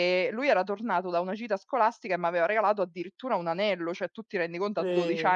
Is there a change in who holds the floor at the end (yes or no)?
no